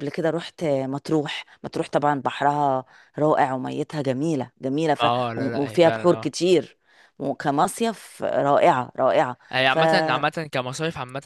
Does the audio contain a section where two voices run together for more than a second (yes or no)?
yes